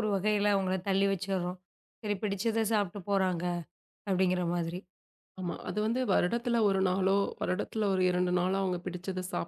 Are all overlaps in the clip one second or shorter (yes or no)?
yes